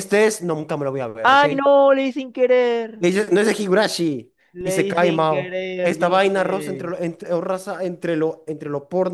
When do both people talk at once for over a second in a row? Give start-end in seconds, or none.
4.5-6.9